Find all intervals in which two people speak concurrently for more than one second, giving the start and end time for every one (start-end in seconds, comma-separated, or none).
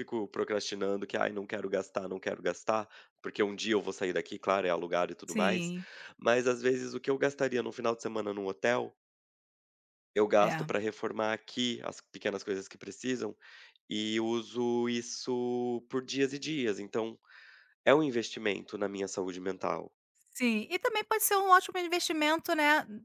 none